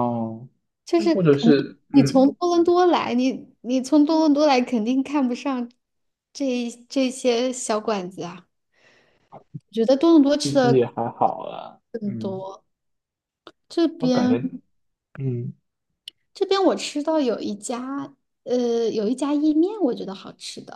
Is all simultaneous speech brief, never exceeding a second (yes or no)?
no